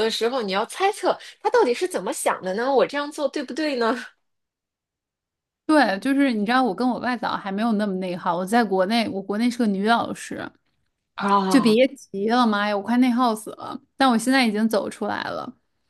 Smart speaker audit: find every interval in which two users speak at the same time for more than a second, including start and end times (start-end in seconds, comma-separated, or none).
none